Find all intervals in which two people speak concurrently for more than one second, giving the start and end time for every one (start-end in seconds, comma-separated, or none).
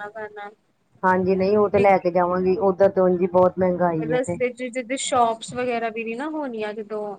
none